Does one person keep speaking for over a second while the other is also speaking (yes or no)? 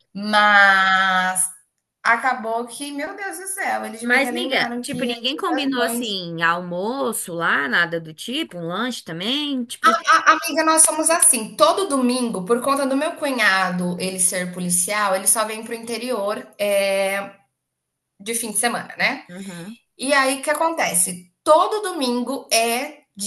yes